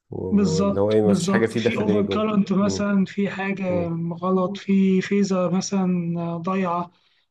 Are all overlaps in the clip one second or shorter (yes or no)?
no